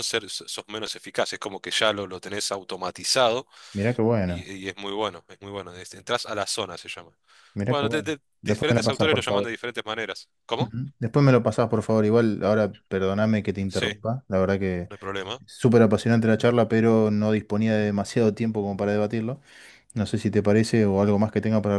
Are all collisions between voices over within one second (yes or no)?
no